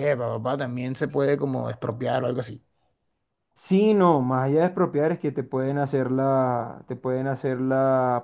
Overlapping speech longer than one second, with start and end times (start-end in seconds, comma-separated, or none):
none